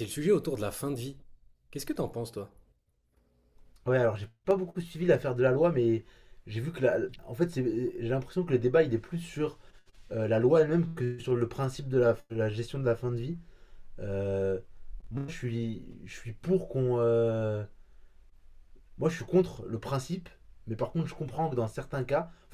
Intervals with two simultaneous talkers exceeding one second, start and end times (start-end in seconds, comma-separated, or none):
none